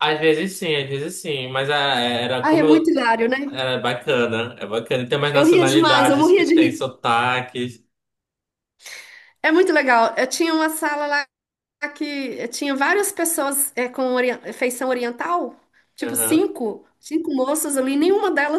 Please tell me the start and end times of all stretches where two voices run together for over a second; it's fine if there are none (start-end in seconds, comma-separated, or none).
5.3-6.8